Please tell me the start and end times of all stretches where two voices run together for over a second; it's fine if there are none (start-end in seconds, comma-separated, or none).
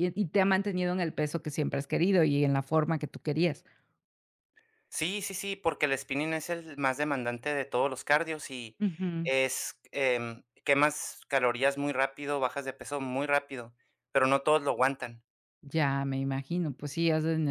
none